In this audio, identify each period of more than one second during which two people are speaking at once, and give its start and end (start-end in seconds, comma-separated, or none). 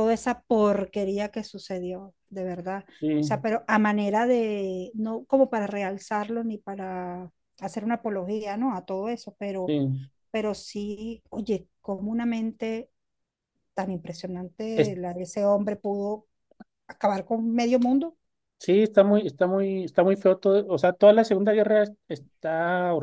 none